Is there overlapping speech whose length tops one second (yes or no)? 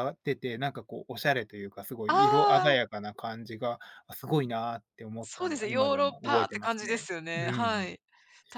yes